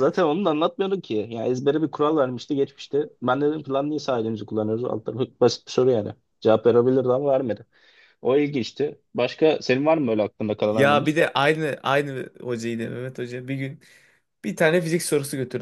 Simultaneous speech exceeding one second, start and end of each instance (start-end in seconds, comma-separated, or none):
none